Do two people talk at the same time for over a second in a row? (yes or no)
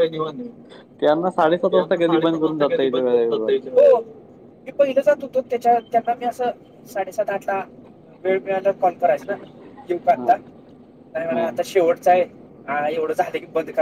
yes